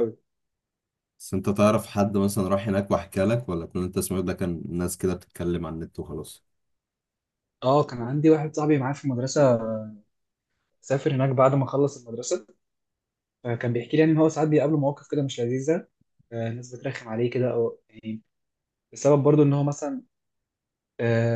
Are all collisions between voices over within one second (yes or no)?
yes